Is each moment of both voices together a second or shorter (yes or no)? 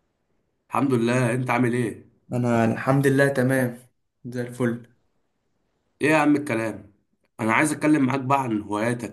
yes